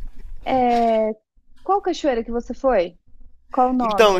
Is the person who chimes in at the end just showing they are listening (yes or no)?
no